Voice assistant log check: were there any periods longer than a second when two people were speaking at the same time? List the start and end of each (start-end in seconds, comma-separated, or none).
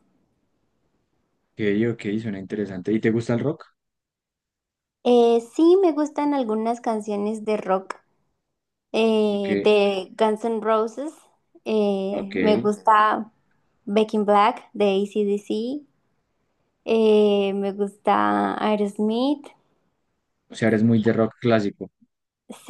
none